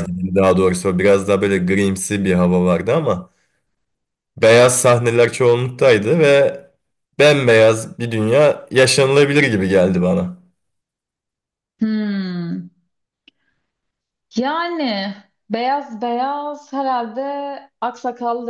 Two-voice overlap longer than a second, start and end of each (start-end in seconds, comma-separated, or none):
none